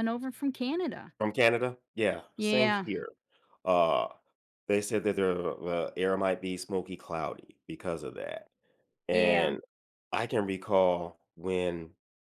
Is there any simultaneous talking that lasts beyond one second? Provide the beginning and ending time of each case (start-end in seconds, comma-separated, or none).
none